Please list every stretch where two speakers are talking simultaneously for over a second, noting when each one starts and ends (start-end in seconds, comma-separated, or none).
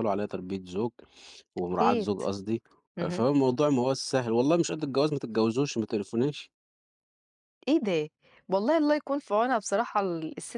none